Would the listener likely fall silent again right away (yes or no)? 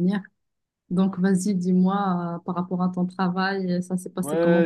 no